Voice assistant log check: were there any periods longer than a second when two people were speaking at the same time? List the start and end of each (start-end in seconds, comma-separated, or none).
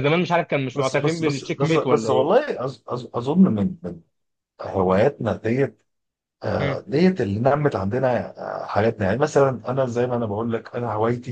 0.7-2.3